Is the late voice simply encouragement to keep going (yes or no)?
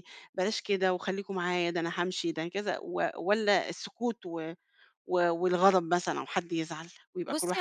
no